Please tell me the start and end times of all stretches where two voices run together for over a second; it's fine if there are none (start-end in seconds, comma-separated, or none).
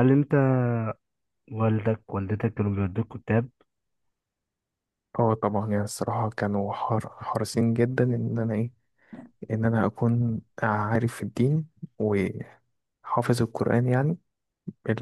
none